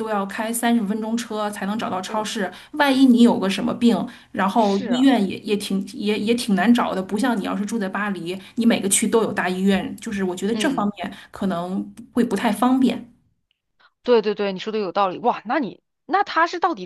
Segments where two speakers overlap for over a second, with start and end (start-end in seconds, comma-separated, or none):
none